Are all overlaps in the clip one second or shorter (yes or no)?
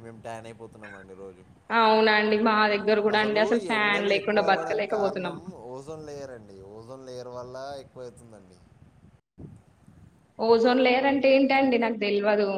no